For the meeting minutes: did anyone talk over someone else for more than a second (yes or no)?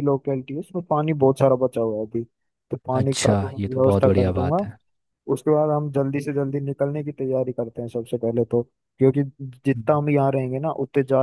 yes